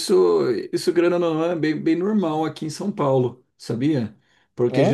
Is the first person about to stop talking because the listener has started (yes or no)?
no